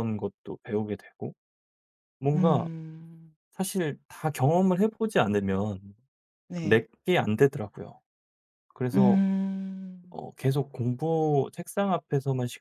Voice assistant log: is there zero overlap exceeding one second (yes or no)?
yes